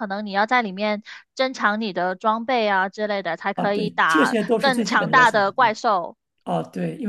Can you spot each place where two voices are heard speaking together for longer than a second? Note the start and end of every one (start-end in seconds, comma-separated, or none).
3.5-5.8